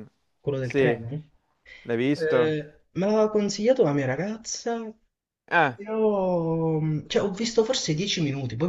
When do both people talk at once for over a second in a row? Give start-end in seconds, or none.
none